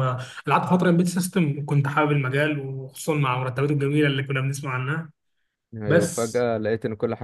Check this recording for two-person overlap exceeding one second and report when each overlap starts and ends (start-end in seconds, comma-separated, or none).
none